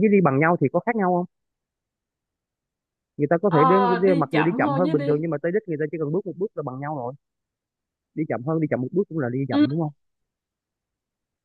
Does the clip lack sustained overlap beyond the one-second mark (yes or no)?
no